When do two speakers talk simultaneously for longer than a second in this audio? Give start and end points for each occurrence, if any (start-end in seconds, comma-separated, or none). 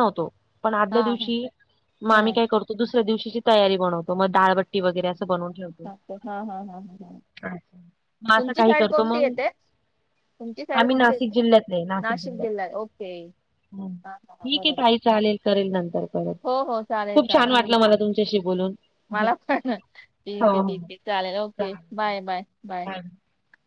none